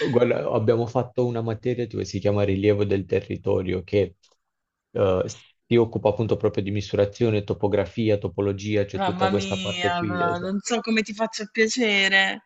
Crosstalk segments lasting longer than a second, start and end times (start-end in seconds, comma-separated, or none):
8.9-10.6